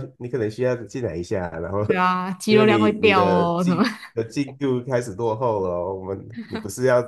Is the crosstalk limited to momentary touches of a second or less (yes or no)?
no